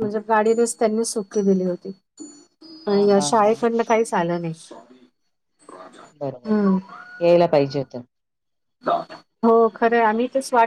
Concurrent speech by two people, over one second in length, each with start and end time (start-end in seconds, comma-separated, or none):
none